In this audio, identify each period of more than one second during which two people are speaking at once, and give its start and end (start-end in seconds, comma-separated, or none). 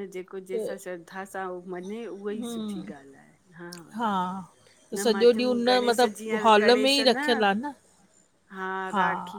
4.9-7.2